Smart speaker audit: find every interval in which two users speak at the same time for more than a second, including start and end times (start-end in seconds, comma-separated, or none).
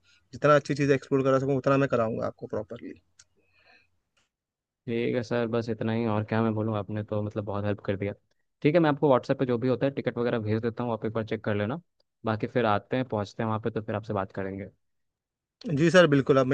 none